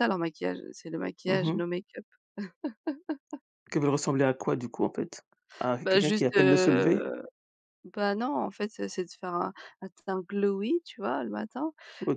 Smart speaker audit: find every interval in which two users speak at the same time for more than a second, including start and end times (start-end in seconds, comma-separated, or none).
5.8-7.0